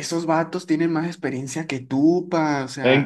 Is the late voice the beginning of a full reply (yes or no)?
yes